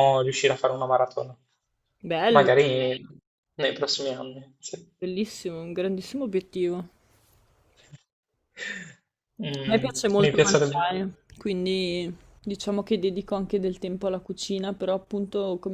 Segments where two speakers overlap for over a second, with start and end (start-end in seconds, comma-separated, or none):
9.7-10.9